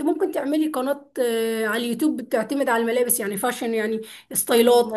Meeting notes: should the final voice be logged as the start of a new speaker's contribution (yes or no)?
no